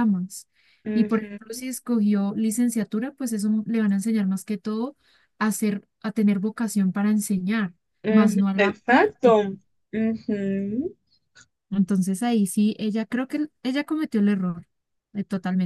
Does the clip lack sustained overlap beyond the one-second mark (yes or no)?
no